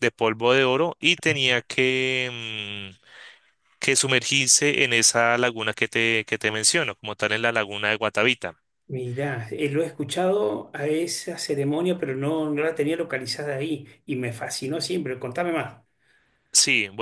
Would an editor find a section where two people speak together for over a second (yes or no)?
no